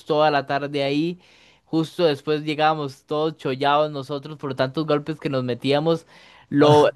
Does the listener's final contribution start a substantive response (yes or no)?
no